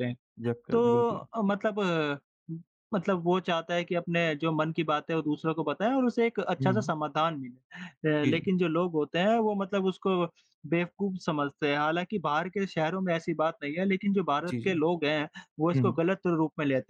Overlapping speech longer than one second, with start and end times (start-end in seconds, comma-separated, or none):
none